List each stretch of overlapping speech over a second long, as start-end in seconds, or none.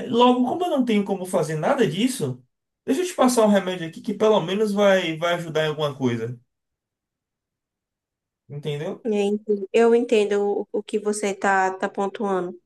none